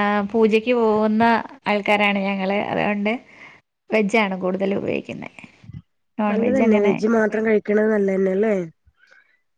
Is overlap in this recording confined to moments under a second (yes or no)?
yes